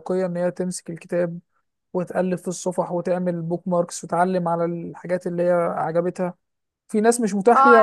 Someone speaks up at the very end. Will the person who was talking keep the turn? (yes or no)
no